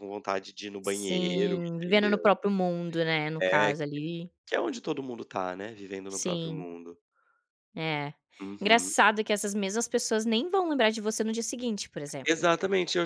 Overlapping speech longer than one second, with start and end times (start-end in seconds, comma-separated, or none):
0.8-2.3